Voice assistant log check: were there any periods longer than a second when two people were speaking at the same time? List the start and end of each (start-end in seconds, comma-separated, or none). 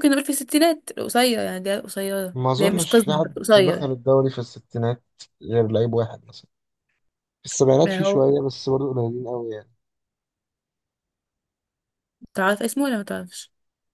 2.3-3.9